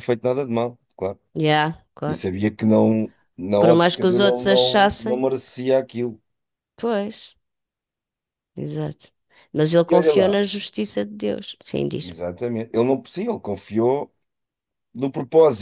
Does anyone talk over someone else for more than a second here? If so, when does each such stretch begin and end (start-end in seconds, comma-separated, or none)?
3.6-5.2